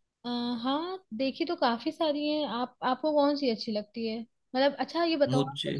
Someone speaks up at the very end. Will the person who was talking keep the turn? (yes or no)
yes